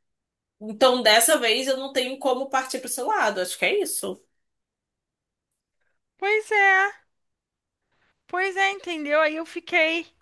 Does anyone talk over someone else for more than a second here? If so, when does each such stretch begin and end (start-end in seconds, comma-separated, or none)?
none